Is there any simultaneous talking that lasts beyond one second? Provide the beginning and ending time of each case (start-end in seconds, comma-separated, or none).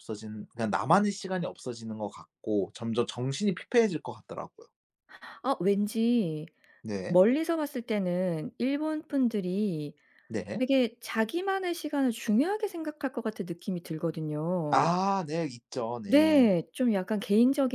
none